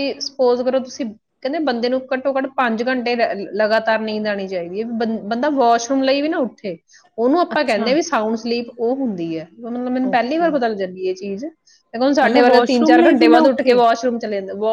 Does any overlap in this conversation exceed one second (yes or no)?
yes